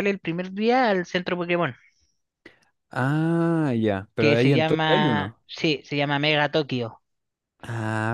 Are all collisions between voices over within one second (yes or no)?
no